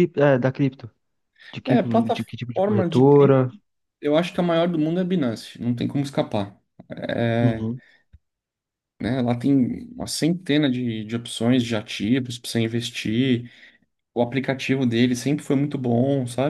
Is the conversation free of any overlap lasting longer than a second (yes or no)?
no